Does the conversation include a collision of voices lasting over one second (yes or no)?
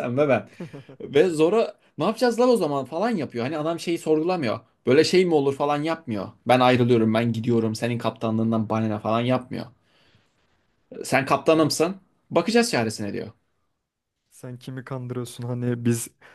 no